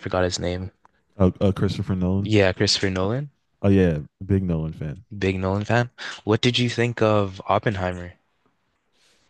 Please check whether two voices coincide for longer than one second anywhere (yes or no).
no